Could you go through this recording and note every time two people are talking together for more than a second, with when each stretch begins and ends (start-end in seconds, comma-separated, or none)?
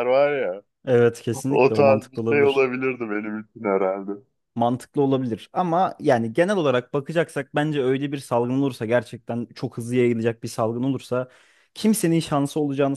1.5-2.7